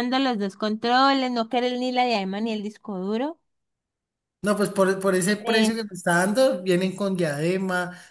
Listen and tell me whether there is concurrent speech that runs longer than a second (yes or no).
no